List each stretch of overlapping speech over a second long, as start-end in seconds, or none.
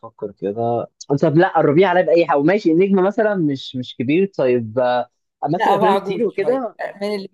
5.5-6.8